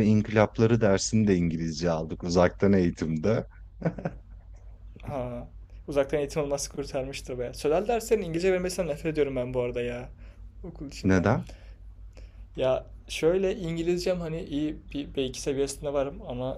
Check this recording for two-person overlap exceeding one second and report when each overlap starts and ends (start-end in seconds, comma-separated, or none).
none